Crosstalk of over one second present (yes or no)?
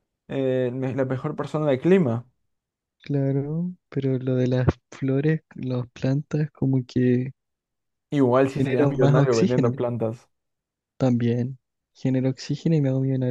yes